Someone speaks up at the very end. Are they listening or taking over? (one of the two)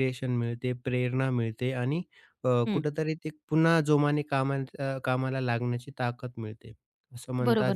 taking over